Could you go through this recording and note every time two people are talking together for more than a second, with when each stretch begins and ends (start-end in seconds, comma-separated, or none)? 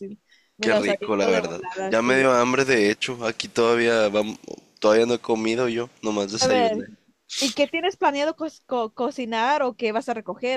0.6-2.3